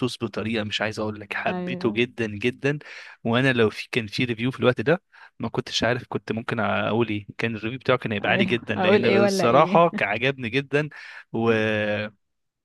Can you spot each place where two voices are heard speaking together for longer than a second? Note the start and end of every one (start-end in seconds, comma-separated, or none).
8.2-9.9